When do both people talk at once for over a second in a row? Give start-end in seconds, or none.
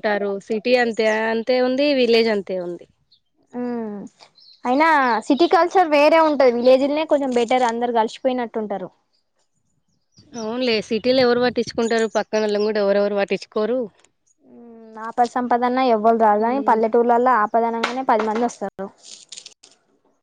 none